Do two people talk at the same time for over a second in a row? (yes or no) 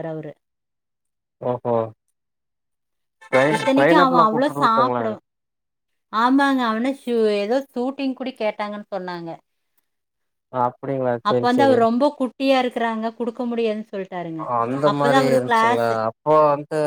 yes